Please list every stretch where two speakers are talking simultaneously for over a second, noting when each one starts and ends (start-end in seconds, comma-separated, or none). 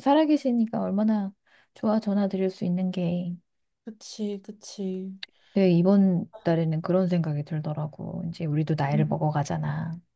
none